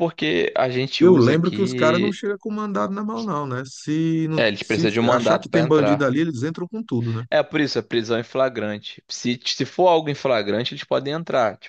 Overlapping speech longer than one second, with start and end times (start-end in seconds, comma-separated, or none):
1.0-2.2, 4.4-6.1